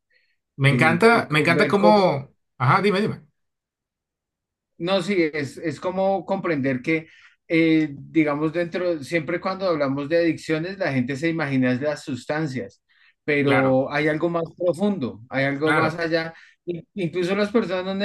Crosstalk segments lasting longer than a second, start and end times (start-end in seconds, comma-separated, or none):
0.6-2.1